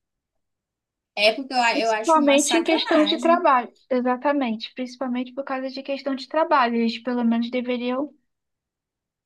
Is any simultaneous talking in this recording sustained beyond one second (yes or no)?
yes